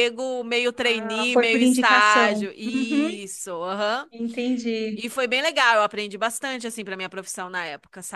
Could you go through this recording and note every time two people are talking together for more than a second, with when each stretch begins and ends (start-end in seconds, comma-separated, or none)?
0.8-3.1